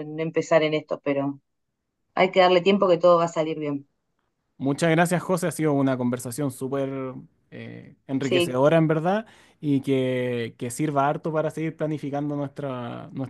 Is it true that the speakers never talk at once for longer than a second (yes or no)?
yes